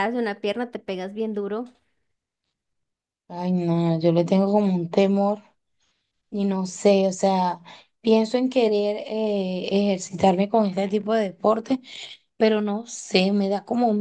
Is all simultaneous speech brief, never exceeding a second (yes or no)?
yes